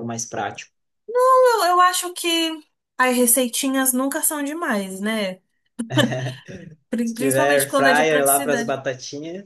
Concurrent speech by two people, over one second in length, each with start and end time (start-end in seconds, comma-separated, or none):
7.0-8.8